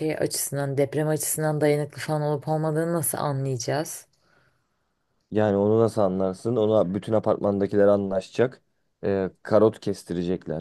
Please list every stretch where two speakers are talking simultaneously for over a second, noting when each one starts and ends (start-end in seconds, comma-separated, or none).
none